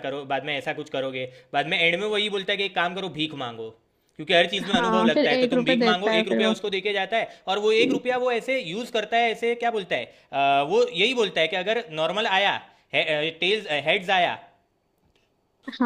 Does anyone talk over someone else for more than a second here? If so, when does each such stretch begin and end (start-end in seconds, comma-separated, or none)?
4.6-6.5